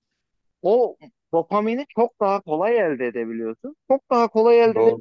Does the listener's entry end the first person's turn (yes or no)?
no